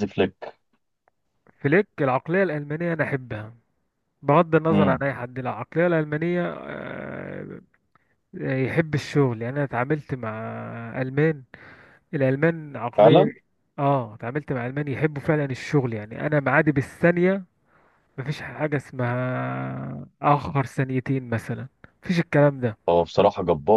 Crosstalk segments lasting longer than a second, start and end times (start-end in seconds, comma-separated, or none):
none